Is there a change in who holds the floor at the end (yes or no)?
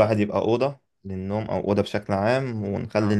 no